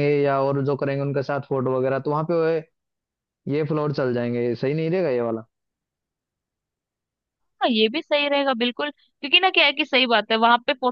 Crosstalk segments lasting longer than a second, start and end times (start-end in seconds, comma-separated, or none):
none